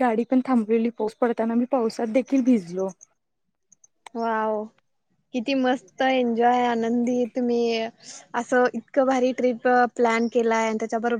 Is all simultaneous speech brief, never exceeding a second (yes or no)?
yes